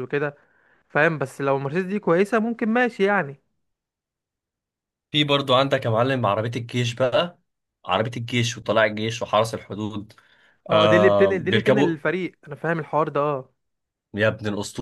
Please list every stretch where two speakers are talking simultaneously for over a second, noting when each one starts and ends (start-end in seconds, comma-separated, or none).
10.7-12.0